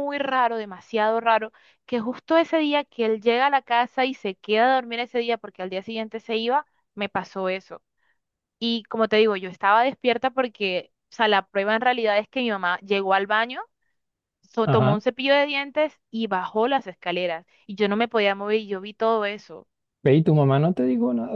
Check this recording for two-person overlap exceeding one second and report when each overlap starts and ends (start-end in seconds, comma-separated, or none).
none